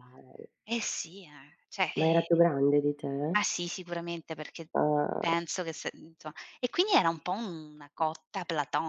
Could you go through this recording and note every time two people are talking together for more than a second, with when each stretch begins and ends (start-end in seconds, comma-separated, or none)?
none